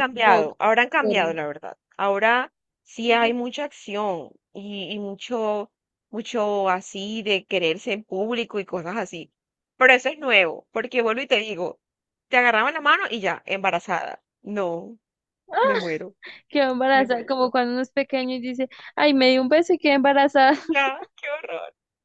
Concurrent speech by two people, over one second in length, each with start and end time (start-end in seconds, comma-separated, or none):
none